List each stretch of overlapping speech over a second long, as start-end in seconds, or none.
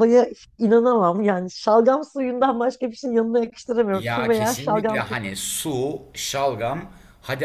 3.9-5.2